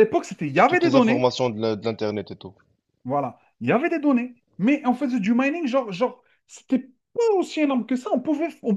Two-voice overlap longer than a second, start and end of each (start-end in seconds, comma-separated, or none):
none